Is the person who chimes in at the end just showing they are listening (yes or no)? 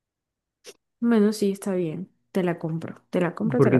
no